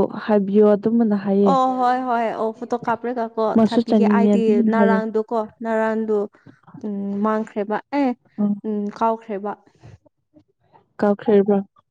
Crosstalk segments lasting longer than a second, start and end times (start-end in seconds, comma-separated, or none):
3.5-5.0